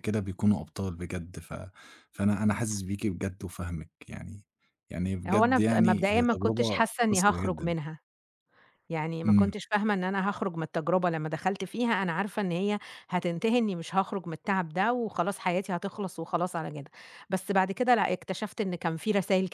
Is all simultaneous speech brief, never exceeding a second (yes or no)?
no